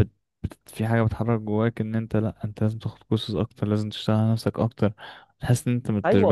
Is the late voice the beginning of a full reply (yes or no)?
yes